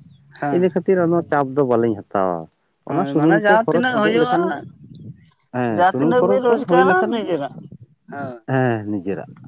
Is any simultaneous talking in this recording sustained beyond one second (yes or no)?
yes